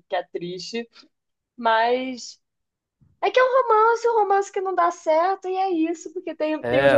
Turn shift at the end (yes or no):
no